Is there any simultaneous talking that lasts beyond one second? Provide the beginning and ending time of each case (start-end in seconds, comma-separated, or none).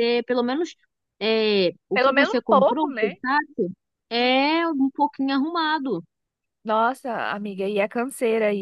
1.9-3.2